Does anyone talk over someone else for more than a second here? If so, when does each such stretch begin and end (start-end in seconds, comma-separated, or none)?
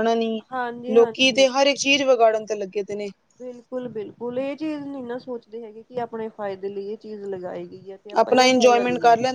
none